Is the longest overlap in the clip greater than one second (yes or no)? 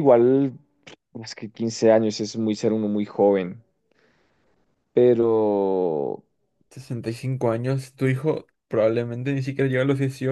no